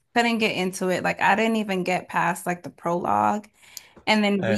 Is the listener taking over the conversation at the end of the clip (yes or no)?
no